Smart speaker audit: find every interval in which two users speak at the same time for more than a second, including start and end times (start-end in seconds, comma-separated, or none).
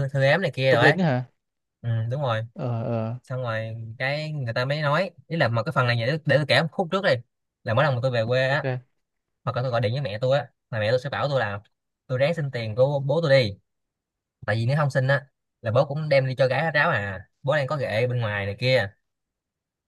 none